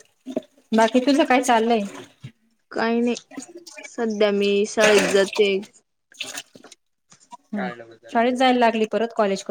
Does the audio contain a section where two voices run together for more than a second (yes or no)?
no